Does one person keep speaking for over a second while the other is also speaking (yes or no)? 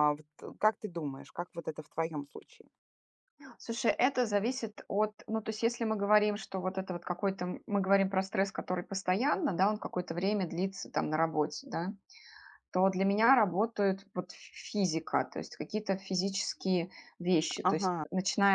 no